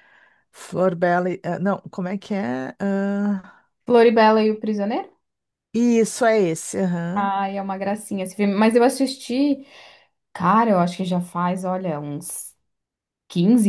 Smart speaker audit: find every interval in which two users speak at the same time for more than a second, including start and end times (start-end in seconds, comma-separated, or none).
none